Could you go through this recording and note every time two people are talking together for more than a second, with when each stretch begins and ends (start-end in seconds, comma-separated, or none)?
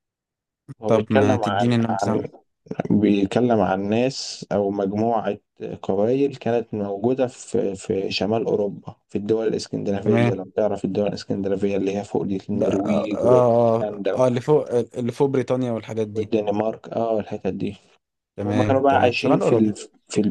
0.9-2.2, 12.5-14.2, 18.4-19.7